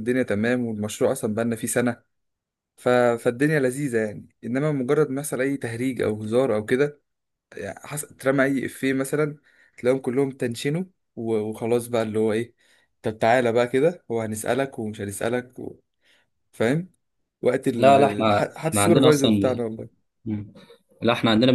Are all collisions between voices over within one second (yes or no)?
no